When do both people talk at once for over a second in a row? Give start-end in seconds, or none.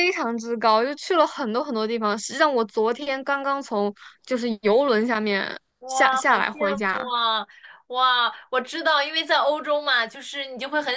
5.8-7.1